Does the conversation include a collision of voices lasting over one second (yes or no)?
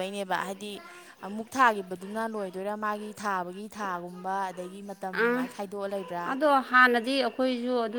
no